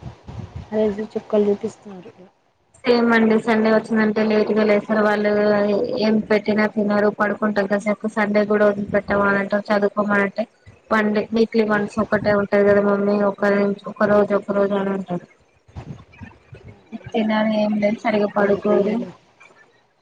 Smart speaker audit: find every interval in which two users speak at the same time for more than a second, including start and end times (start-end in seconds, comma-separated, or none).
17.2-18.9